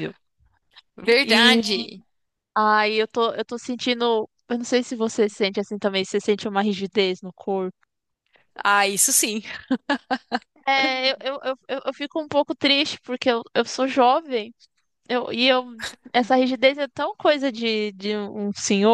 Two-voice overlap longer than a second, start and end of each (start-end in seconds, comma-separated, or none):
none